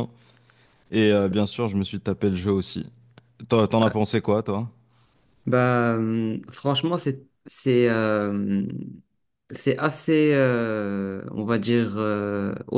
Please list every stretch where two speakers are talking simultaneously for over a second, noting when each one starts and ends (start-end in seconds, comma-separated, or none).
none